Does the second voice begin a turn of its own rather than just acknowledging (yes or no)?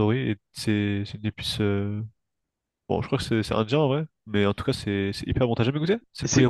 yes